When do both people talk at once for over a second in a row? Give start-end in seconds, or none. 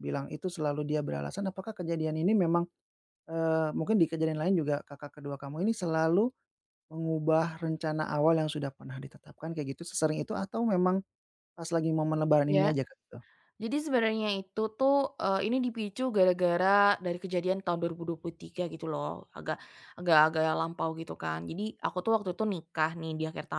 none